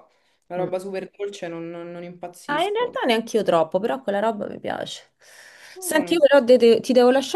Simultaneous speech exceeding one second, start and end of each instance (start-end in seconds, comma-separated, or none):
none